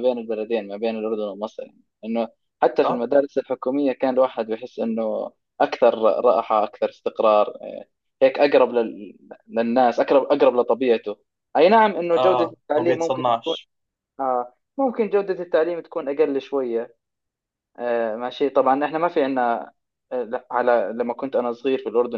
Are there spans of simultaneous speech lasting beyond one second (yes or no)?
yes